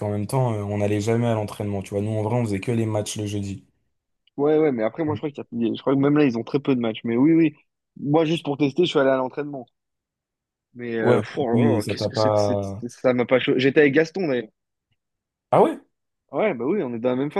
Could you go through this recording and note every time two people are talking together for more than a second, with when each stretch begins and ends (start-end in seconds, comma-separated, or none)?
11.0-12.8